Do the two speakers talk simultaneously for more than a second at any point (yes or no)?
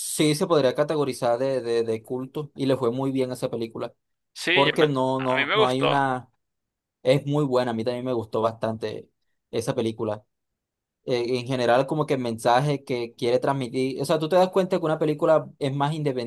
yes